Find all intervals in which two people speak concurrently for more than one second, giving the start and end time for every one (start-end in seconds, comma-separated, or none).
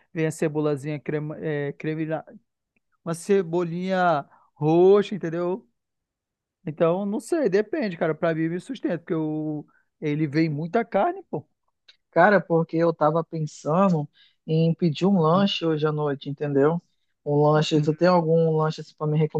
none